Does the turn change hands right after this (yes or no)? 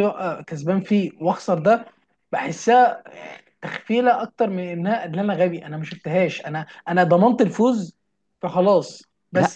no